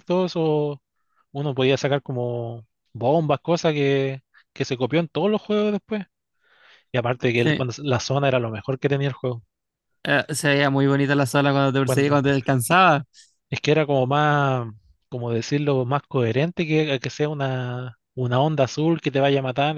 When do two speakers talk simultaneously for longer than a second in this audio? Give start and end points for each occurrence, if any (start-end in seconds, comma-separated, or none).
none